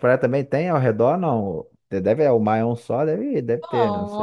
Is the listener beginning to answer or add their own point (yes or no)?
yes